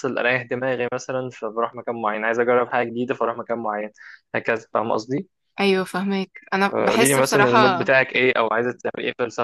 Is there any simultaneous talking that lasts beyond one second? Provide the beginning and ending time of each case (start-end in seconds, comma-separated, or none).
6.7-7.9